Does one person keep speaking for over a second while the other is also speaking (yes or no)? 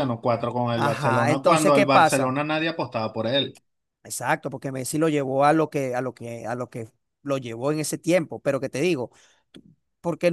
yes